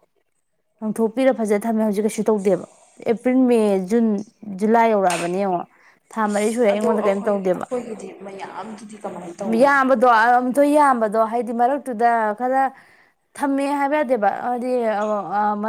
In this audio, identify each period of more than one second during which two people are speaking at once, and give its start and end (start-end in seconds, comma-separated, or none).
none